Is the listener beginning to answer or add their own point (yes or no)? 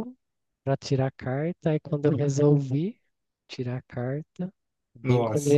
no